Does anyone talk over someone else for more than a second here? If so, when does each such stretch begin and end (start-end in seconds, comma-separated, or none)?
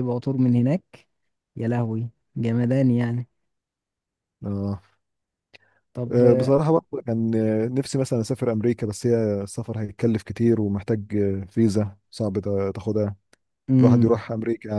none